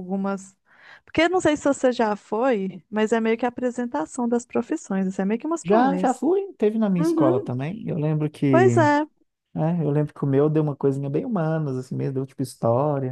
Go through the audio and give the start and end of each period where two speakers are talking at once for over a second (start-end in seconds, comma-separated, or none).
none